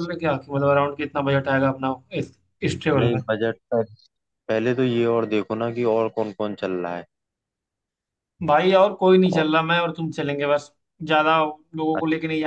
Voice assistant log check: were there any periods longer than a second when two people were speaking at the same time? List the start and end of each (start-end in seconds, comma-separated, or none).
none